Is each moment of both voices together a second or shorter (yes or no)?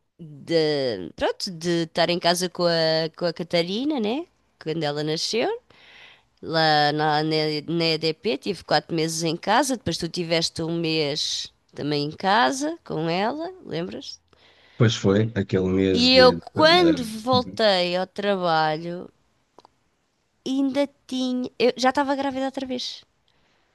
no